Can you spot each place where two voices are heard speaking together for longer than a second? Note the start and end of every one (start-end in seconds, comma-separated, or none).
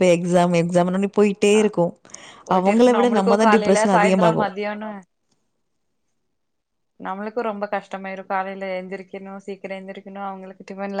2.6-4.5